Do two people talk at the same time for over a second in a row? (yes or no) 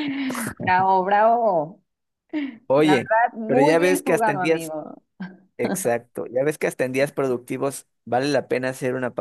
yes